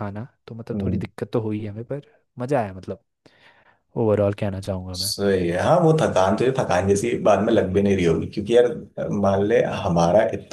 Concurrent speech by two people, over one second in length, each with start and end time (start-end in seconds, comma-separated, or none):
none